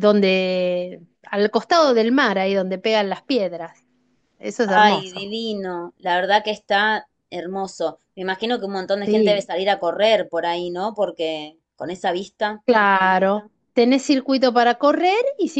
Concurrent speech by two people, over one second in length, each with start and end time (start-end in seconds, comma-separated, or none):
none